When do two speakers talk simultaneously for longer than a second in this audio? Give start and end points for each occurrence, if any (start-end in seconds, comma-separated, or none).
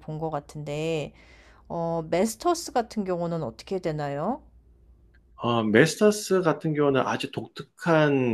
none